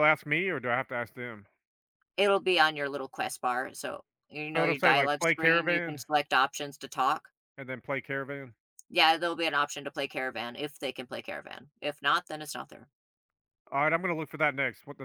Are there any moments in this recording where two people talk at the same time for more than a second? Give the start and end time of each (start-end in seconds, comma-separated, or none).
4.5-6.0